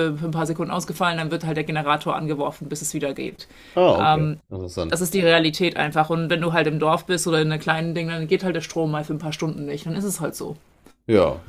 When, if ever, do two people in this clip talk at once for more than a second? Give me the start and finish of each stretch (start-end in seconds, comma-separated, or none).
none